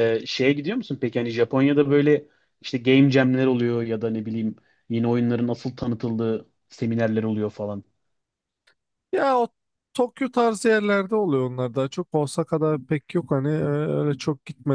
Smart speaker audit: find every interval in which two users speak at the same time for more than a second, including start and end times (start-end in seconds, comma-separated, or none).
none